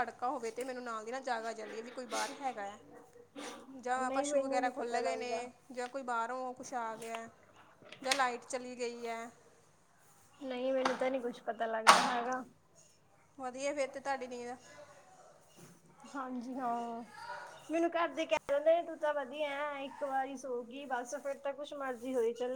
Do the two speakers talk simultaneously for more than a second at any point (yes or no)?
yes